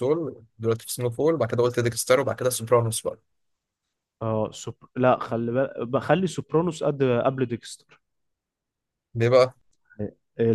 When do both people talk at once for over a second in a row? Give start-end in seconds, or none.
none